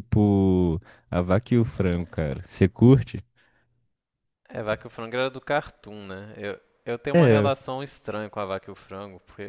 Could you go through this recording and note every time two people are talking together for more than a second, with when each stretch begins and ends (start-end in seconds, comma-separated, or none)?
none